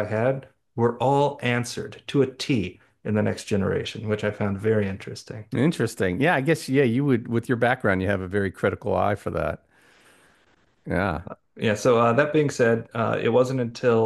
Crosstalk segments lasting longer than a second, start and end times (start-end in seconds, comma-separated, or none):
none